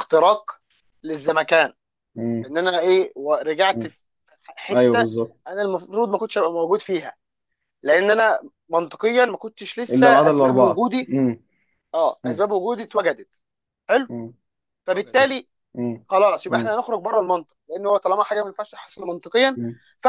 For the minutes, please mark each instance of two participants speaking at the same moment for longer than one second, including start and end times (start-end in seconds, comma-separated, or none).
9.9-11.1